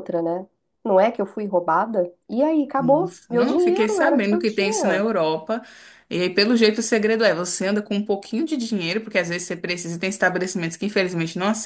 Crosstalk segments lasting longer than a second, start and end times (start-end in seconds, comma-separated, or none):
2.8-5.0